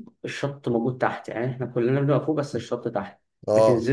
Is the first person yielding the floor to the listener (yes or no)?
no